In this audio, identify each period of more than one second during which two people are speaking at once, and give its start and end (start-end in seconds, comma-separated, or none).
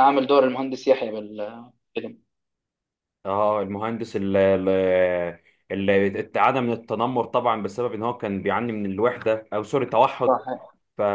none